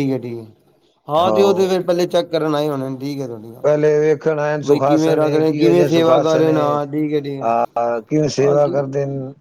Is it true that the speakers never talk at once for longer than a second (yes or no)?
no